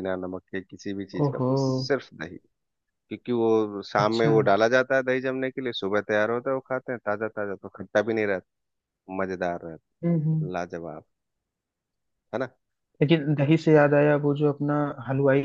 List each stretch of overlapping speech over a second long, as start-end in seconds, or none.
none